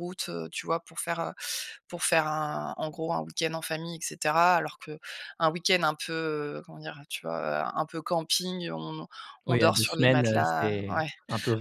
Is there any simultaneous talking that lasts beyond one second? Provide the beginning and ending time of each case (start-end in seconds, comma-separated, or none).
9.5-11.1